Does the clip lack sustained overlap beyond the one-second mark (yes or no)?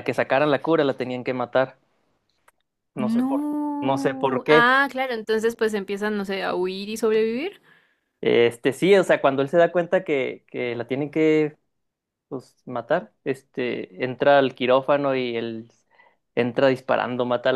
no